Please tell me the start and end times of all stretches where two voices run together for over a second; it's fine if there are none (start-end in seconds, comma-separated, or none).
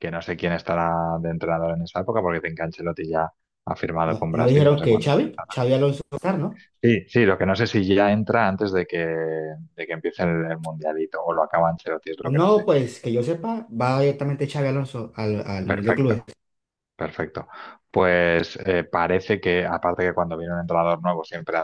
4.0-5.5